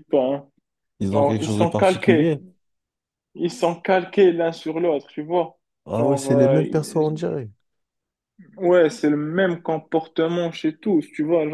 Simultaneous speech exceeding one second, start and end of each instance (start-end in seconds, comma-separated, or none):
1.1-2.4, 6.0-7.3